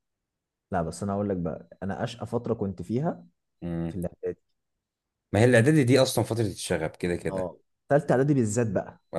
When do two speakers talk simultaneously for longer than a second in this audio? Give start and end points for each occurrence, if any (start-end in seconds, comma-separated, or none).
none